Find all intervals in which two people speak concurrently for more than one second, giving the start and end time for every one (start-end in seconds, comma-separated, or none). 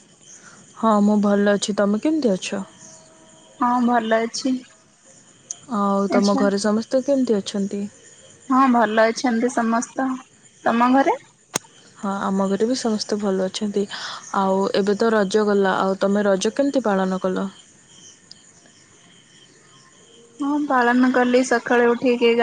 none